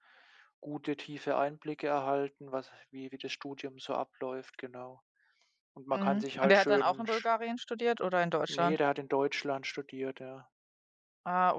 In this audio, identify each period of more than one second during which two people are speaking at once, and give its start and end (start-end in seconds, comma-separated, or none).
6.0-7.3